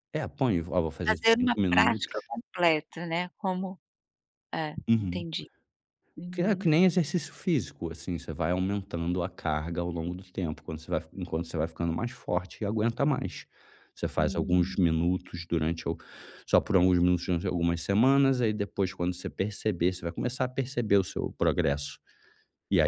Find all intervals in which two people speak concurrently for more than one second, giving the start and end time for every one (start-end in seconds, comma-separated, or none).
1.1-2.3